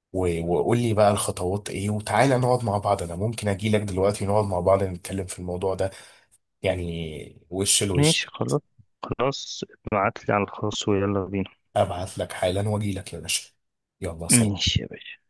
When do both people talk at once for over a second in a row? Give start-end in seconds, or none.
none